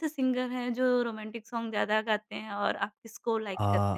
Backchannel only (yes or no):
no